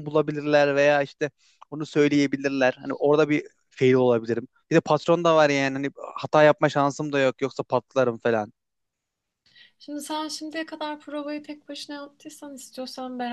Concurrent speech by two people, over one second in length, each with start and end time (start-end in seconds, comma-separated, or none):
none